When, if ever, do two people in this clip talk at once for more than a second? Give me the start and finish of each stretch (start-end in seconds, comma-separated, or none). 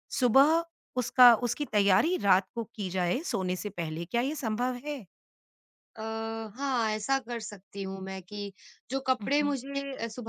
none